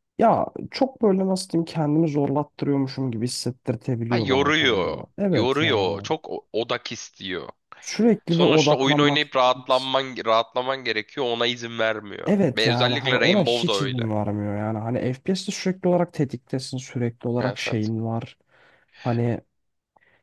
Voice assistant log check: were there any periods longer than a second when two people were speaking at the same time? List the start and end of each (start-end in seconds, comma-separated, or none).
4.1-6.1, 8.3-9.9, 12.2-14.0